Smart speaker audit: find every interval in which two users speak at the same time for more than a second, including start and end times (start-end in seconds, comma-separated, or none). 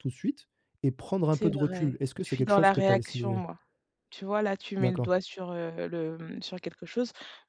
1.3-3.4